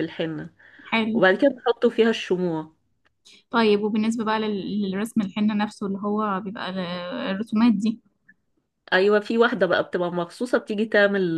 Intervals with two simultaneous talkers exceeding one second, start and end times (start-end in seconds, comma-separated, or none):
none